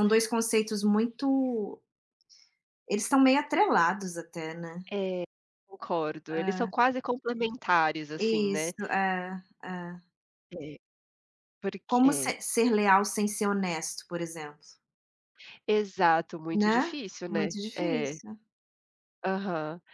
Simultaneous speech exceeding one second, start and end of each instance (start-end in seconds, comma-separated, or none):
16.5-18.2